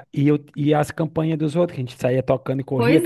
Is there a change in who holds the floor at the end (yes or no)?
yes